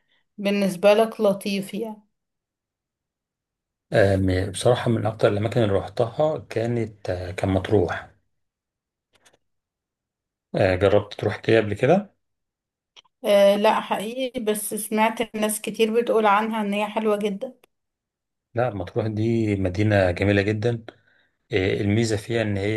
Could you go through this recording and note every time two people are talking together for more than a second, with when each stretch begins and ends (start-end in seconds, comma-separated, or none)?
none